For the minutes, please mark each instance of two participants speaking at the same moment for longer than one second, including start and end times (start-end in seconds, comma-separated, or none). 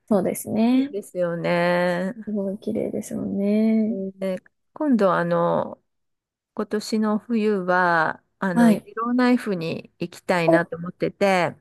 none